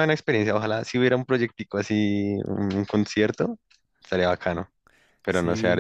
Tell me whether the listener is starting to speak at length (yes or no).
yes